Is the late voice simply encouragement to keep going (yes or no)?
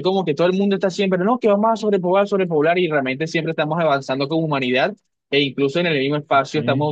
yes